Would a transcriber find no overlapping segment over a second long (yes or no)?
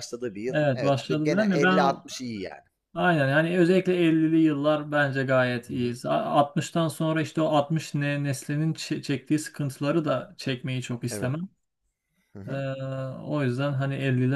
no